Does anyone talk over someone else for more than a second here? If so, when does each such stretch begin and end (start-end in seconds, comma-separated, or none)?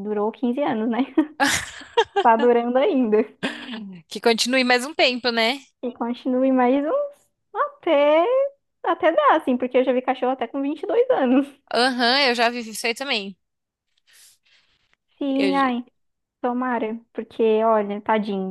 none